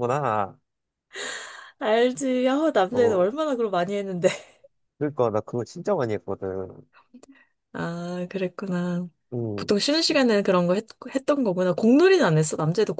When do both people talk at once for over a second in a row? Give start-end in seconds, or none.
none